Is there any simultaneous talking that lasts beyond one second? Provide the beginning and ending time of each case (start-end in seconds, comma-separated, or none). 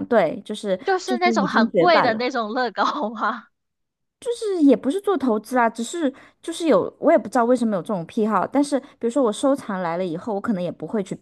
0.8-2.3